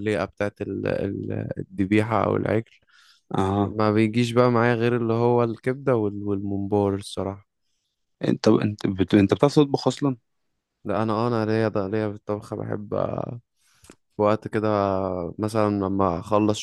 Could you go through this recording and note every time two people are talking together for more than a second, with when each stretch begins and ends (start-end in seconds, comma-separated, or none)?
none